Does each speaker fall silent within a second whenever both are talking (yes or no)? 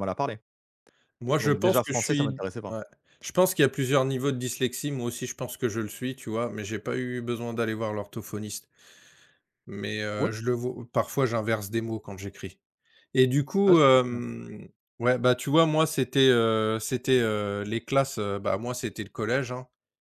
no